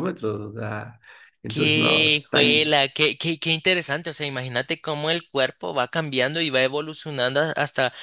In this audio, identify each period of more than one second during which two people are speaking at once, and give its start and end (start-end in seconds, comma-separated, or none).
1.5-2.7